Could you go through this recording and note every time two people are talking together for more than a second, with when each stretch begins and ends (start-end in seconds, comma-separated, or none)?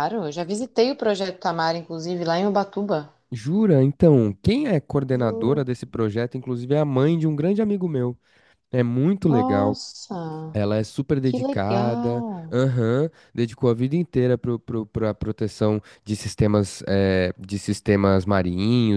11.2-12.6